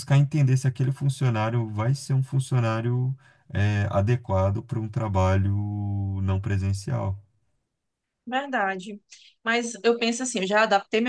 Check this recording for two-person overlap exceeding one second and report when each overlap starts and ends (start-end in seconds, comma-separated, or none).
none